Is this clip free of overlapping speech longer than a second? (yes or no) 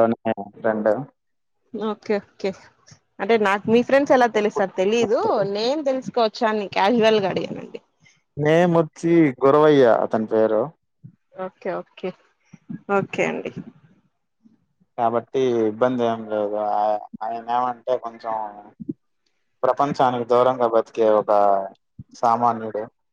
yes